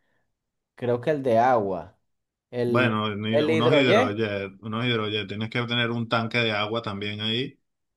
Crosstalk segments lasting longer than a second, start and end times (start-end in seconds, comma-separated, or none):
2.6-4.2